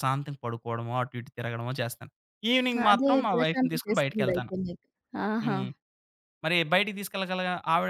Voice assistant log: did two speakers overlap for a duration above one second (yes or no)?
yes